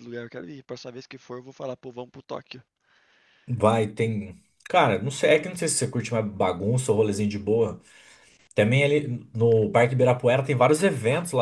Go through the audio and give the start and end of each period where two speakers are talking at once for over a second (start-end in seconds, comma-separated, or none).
none